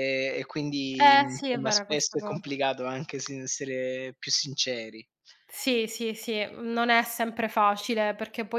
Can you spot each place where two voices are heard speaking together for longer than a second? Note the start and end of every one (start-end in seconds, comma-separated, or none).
1.0-2.5